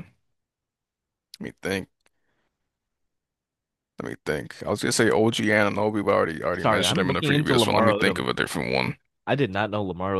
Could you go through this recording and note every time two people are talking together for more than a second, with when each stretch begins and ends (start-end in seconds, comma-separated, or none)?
6.6-8.3